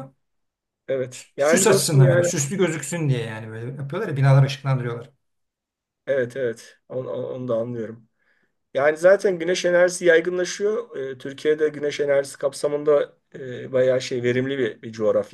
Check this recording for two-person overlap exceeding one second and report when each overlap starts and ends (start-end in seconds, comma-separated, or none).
1.1-2.3